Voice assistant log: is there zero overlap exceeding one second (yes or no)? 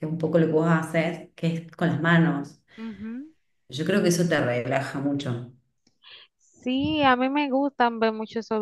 yes